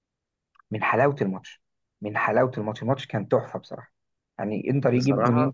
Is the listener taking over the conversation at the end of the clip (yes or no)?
no